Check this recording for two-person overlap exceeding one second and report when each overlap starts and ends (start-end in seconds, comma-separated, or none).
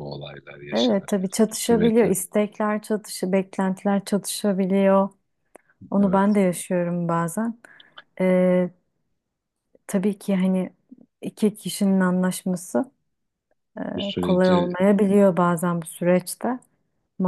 0.7-2.1